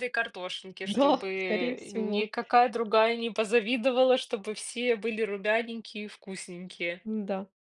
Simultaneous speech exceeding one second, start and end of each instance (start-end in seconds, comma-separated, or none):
0.8-2.3